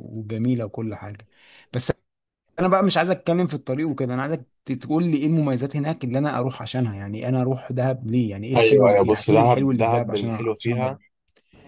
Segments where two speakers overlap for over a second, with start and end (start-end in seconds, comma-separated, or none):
8.6-11.0